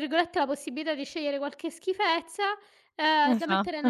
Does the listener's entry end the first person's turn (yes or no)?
no